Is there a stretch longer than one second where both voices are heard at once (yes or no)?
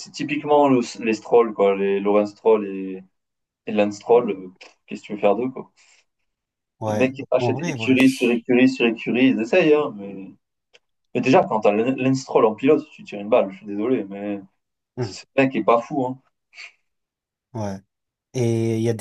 yes